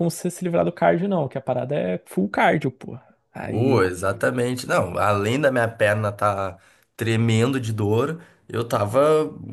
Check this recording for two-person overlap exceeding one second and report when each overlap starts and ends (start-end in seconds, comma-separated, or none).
none